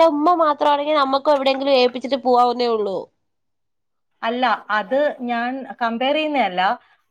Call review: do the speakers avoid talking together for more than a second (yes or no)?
yes